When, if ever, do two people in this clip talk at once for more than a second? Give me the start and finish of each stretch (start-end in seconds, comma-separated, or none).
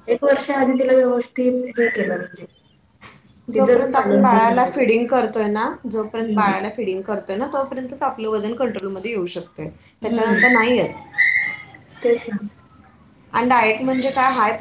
3.5-4.8